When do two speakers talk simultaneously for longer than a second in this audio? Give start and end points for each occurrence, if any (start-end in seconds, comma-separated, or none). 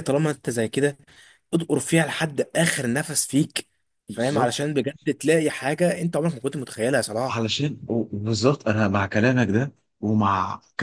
none